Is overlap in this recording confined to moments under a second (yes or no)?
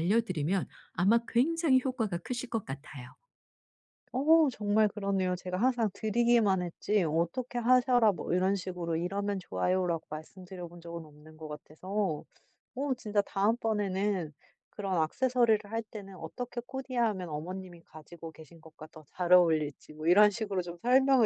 yes